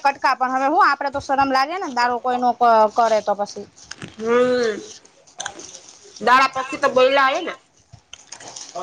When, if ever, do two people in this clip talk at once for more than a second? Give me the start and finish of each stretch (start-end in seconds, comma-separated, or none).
none